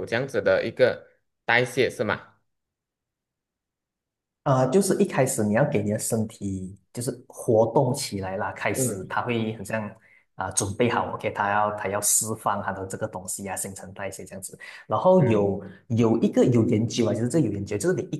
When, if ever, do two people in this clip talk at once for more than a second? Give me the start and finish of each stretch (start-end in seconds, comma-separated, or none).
none